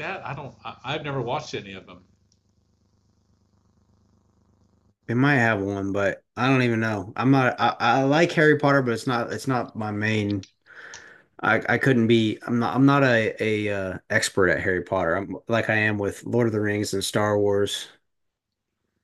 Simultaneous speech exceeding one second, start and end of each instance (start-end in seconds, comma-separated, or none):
none